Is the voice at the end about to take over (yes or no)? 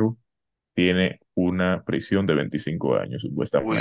yes